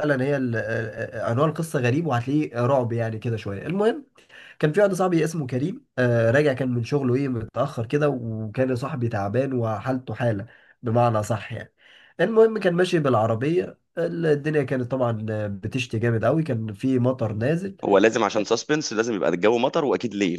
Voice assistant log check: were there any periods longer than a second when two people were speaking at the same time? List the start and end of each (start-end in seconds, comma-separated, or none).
none